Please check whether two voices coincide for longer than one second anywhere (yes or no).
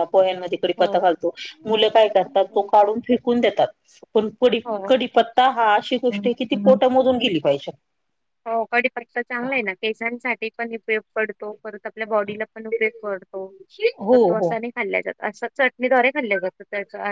no